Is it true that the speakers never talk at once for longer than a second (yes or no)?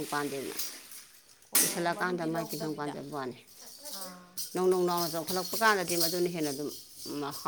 no